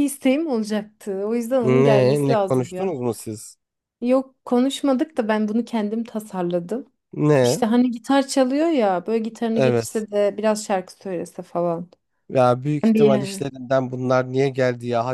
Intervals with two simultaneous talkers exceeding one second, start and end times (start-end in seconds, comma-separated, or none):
1.6-2.9